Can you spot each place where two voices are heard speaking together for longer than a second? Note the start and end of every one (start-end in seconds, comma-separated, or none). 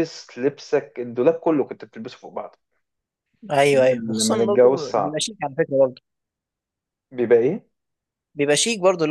3.7-5.2